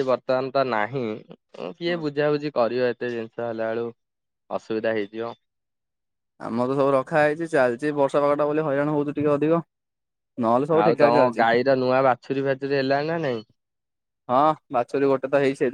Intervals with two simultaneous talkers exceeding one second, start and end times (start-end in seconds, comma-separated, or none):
none